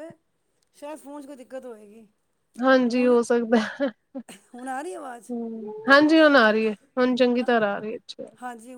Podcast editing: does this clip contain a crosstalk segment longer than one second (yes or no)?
no